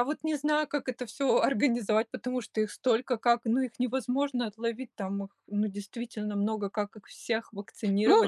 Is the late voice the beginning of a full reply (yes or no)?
yes